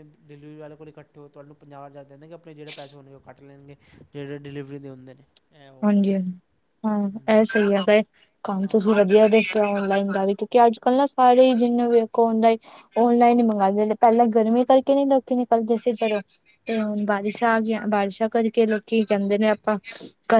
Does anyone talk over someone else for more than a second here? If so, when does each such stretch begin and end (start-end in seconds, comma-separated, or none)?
none